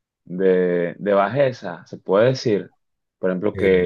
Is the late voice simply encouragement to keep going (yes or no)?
yes